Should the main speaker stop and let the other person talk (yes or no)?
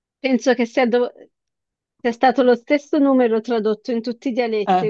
no